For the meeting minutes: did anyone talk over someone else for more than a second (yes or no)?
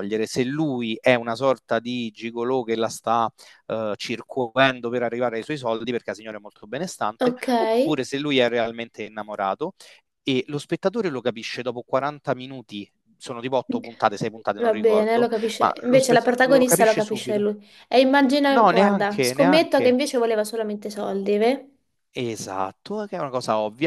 yes